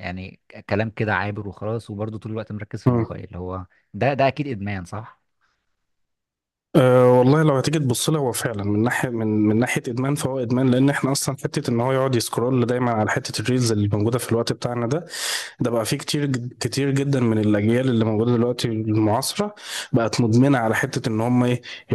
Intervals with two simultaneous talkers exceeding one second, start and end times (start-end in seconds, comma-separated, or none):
none